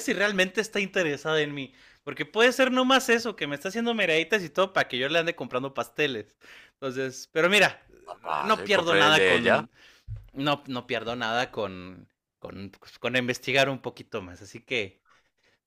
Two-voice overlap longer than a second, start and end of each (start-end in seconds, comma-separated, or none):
8.4-9.6